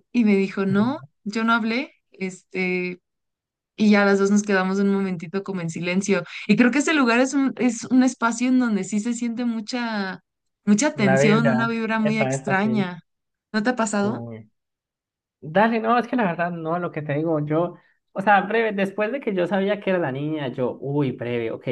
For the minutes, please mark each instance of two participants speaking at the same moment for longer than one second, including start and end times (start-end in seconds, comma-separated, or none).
10.9-12.9